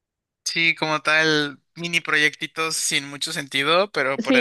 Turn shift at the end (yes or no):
no